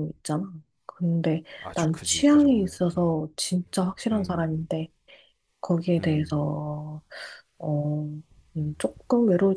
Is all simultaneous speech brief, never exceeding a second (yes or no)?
no